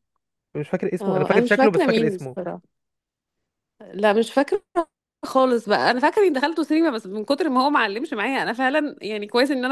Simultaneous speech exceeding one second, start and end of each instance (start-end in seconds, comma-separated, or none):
1.0-2.4